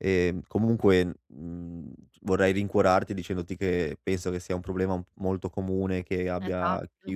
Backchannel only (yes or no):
yes